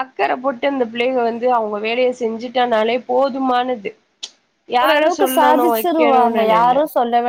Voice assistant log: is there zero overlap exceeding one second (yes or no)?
no